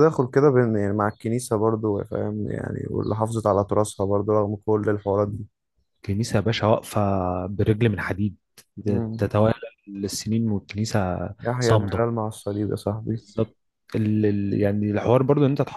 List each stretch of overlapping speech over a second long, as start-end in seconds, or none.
none